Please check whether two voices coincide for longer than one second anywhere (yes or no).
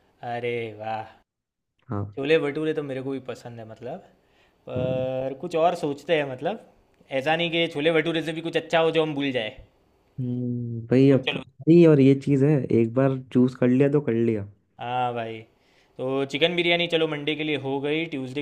no